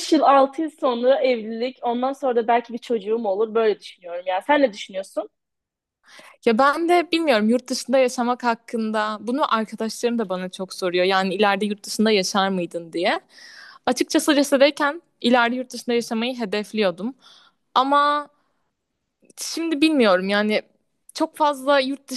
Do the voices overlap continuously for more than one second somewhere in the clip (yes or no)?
no